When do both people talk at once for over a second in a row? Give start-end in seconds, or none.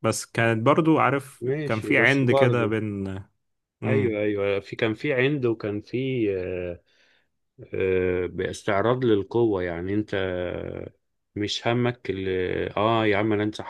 1.4-2.7